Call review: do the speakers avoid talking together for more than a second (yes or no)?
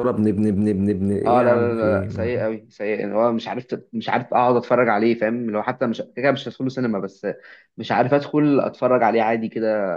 no